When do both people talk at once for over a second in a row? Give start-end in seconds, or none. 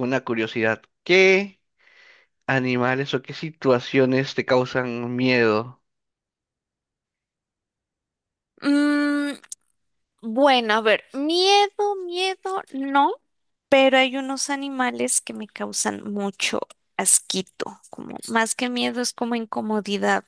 none